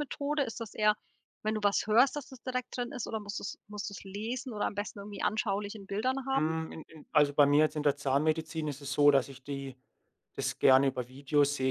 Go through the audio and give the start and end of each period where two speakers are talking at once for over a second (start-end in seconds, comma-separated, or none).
none